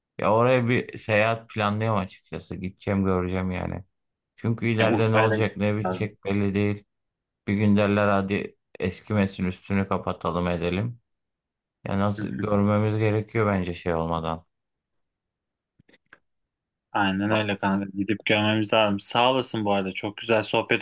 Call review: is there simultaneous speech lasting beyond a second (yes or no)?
yes